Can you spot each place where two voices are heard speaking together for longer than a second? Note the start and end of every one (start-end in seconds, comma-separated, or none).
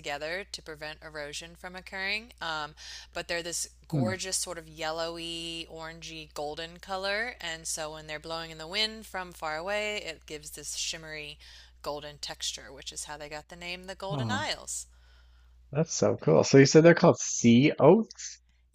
none